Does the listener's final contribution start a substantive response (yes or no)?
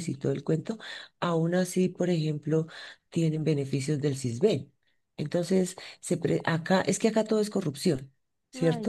no